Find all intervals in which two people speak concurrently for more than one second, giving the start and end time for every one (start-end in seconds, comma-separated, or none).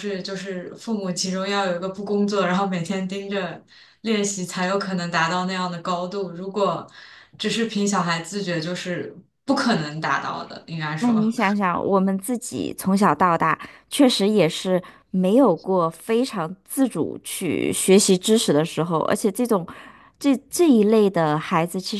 none